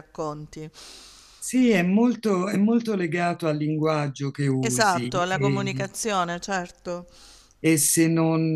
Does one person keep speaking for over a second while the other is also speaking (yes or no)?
yes